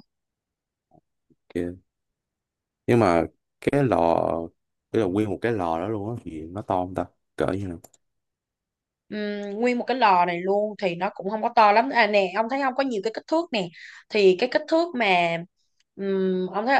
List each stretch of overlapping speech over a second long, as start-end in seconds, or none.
none